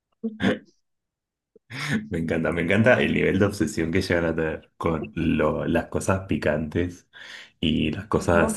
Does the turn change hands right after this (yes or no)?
no